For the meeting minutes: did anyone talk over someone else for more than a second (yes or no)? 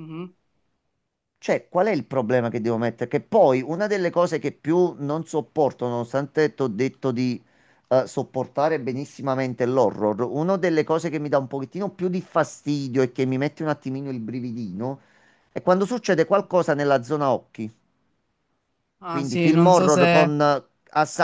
yes